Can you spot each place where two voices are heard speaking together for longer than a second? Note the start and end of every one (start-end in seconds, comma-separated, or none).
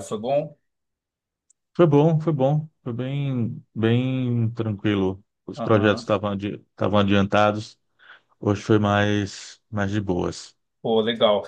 none